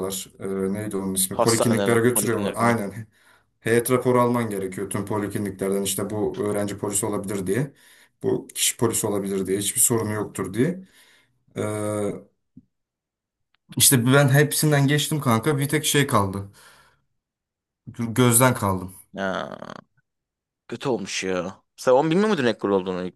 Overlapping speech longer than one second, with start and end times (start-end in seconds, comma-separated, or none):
1.3-2.8